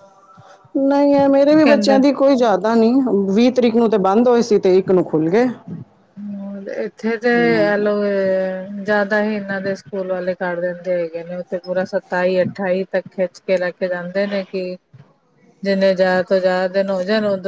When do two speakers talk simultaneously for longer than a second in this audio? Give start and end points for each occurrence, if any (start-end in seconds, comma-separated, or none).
none